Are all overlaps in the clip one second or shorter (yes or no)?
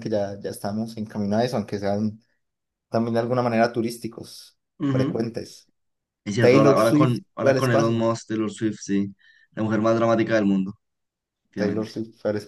no